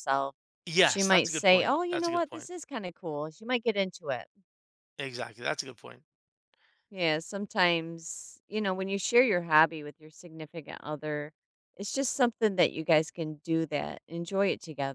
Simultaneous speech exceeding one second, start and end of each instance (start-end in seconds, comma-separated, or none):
0.8-2.5